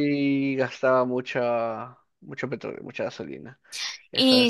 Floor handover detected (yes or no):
yes